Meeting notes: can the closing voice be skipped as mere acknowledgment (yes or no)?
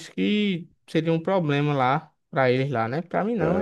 no